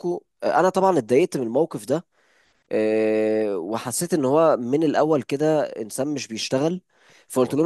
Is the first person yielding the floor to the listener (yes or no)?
no